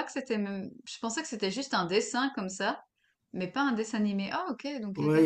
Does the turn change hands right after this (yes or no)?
yes